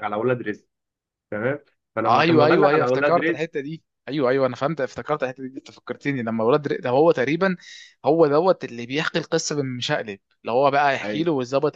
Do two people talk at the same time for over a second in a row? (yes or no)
yes